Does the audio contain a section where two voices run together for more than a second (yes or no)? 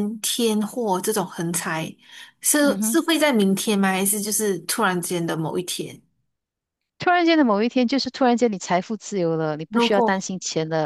no